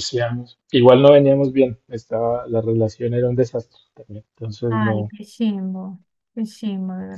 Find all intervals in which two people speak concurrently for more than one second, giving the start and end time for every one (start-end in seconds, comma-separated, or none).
none